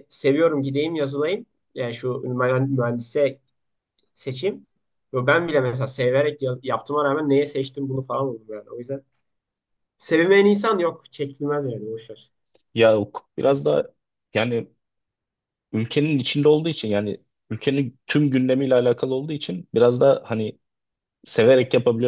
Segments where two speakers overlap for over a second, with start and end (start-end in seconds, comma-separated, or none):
none